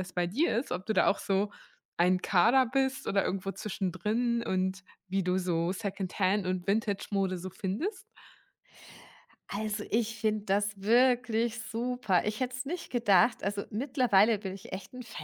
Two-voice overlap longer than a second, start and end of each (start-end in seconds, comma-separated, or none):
none